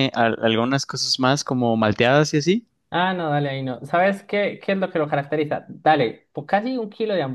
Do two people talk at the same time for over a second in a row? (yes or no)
no